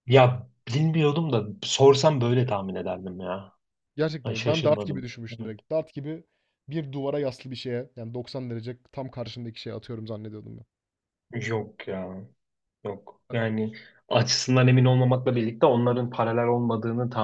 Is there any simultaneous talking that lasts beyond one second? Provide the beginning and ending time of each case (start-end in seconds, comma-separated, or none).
4.2-5.6